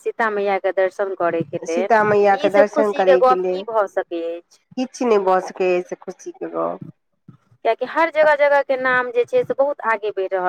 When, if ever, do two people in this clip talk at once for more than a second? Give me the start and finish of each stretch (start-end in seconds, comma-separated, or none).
1.7-3.6